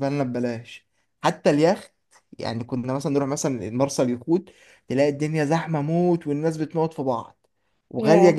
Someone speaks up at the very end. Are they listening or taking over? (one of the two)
listening